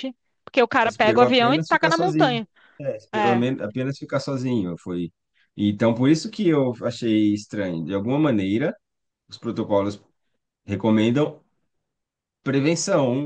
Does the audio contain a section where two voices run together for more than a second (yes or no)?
yes